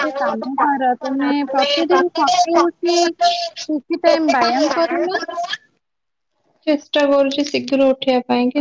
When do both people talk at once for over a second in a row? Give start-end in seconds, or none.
none